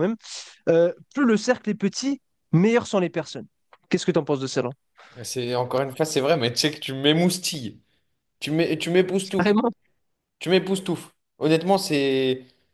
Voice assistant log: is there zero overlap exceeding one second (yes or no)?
yes